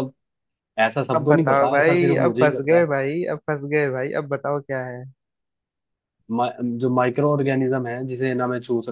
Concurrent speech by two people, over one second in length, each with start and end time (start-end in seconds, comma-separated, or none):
1.1-2.9